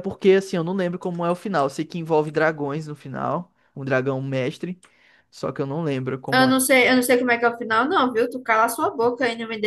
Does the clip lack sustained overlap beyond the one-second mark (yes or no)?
yes